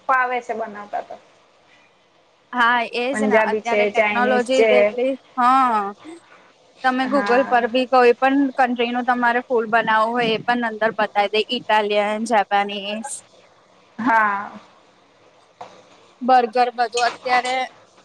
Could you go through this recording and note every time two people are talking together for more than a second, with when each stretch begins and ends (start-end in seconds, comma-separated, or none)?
3.1-4.7